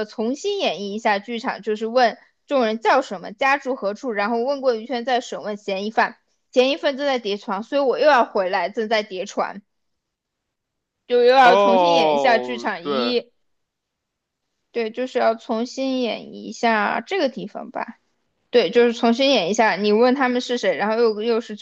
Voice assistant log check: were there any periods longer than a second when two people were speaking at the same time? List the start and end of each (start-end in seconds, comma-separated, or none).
11.4-13.1